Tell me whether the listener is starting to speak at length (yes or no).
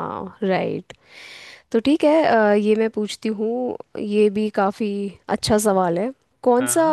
no